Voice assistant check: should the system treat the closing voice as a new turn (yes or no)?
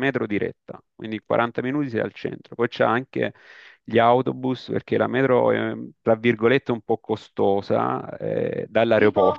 no